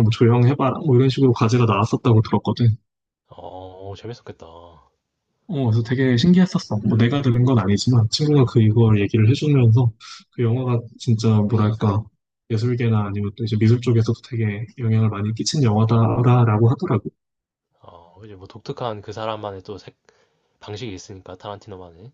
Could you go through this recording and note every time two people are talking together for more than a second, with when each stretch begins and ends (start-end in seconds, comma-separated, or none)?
none